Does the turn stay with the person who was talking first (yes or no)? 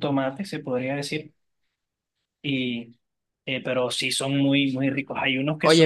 no